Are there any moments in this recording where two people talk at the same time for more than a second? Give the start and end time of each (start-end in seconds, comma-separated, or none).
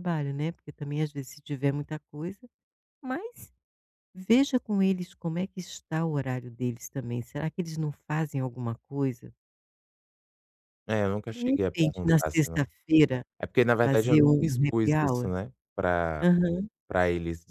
11.3-12.6, 13.8-15.3